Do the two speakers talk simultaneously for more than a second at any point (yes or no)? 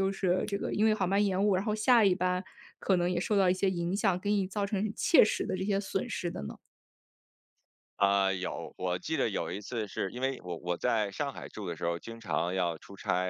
no